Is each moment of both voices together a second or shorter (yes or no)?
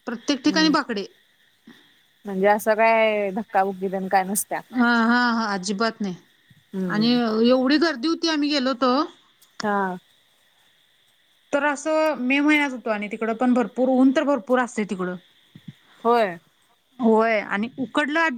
yes